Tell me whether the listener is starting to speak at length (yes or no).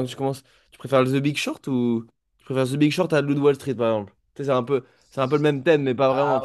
yes